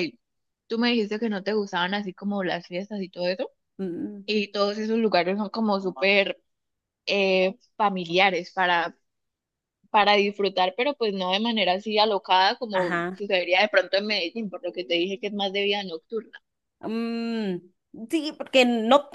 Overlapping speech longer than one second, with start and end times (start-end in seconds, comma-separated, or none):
none